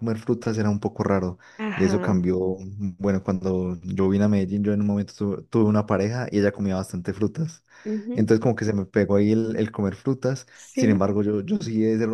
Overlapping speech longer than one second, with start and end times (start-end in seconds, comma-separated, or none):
none